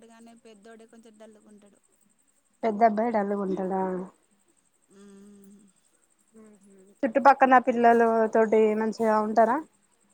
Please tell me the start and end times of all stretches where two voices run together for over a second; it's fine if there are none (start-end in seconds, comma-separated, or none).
none